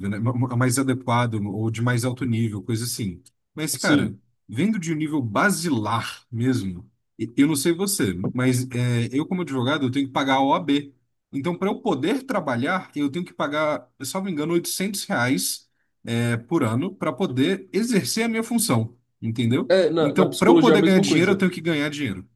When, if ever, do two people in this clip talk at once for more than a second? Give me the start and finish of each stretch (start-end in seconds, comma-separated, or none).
19.7-21.4